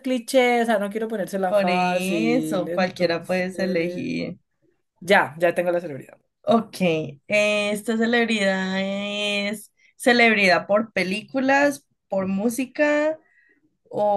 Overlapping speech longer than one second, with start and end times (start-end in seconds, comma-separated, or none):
1.5-4.1